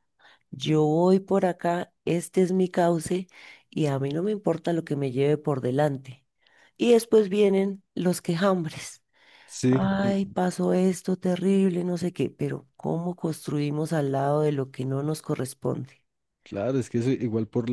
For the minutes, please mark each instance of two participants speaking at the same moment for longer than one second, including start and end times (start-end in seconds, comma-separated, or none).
none